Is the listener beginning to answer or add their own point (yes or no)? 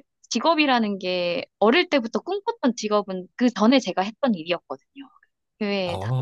yes